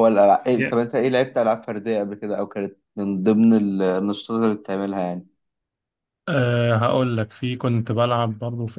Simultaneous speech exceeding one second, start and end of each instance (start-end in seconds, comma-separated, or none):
none